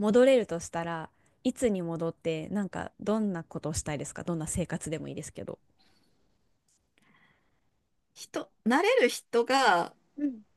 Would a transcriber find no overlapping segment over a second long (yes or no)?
yes